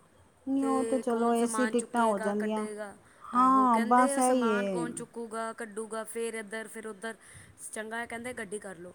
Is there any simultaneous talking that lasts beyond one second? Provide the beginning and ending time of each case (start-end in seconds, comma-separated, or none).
3.3-4.9